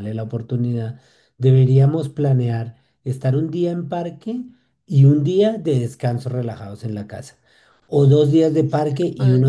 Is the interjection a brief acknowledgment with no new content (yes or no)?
yes